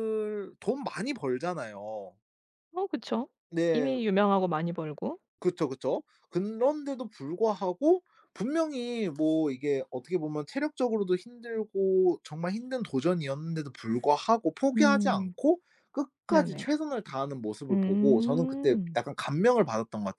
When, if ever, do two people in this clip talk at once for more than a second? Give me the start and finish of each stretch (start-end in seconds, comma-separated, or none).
17.7-19.0